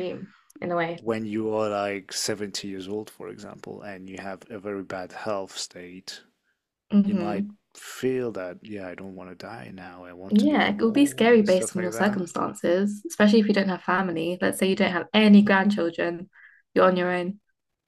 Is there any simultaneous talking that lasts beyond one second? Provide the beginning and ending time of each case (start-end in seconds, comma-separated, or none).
10.3-12.2